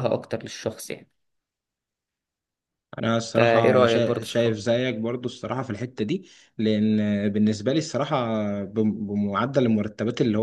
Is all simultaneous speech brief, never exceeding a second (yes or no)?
no